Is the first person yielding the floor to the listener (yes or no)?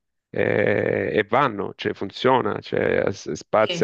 no